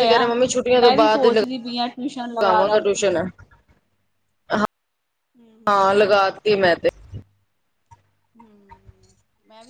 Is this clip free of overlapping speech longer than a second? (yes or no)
no